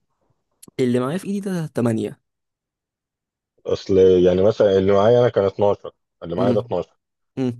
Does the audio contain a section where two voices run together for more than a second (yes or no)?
no